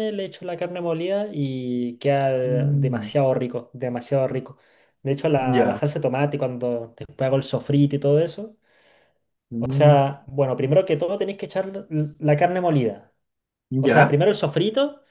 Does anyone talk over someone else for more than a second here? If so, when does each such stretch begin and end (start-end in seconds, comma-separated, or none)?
none